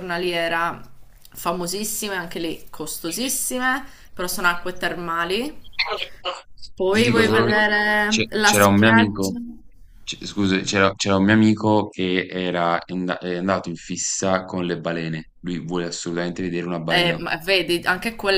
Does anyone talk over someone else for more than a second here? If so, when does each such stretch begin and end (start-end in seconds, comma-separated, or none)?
6.9-9.4